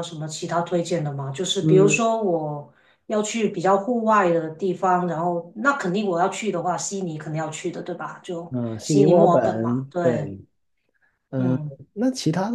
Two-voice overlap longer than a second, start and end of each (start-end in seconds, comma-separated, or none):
8.5-10.4